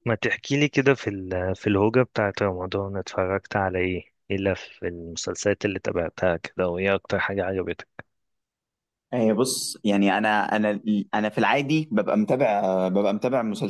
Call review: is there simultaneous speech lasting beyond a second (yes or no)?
no